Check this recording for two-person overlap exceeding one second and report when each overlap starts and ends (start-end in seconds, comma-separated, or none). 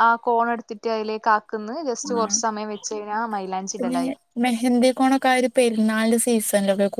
none